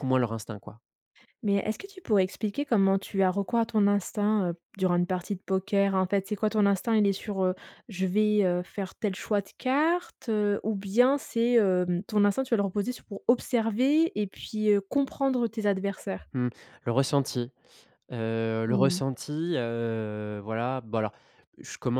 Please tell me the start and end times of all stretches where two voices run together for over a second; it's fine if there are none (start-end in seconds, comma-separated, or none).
none